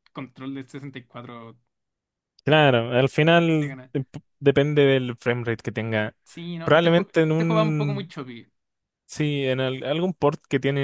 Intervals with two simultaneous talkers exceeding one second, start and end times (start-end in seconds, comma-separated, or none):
6.6-8.1